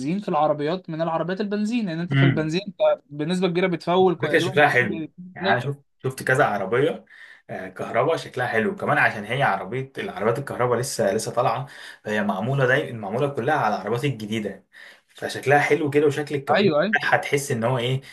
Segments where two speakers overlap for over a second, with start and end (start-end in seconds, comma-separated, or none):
4.2-5.7